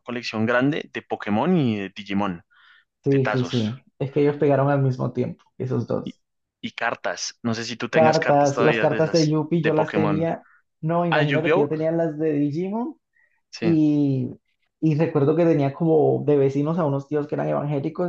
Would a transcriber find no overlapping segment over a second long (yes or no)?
no